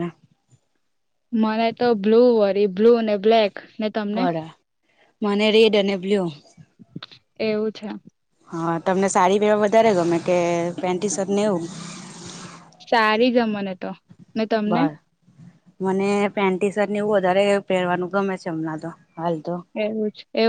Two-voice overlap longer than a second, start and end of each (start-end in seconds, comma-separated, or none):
none